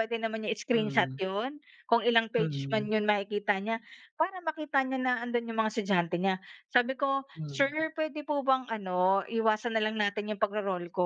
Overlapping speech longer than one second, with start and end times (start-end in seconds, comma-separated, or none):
none